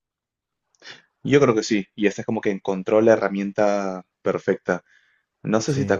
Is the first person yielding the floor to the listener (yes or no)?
no